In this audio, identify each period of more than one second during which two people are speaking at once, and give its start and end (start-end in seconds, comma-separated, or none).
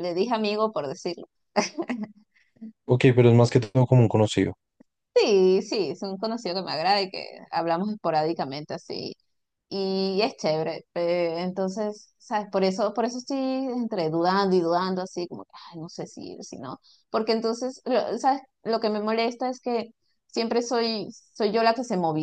none